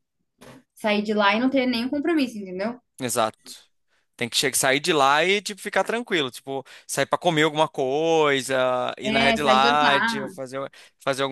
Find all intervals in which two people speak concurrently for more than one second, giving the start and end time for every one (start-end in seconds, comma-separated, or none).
9.0-10.3